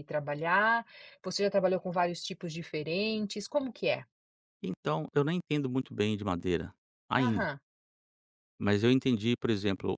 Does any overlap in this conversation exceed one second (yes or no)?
no